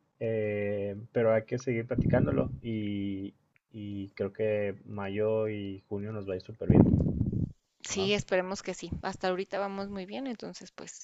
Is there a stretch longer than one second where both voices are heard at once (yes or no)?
no